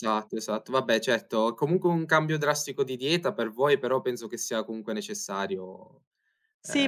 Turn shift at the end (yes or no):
yes